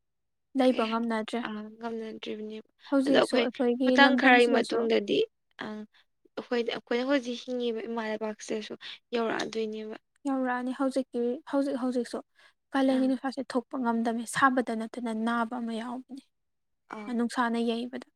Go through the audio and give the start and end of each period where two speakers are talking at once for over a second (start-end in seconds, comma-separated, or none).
3.1-4.8